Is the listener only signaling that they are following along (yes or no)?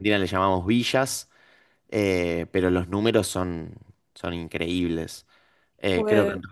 yes